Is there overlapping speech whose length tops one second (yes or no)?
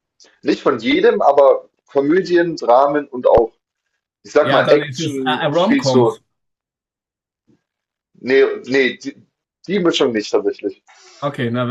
yes